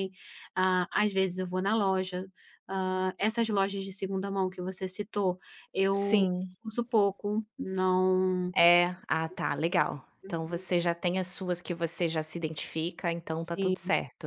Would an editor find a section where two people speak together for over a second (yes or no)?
no